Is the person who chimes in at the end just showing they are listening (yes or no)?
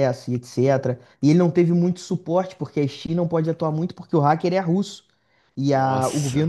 yes